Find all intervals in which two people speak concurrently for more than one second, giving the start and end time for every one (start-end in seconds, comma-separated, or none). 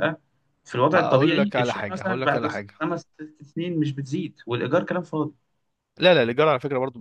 0.9-2.7